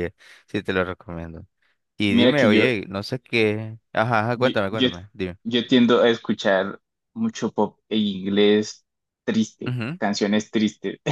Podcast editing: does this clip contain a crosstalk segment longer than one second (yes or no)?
no